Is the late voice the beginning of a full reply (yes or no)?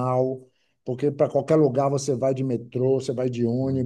no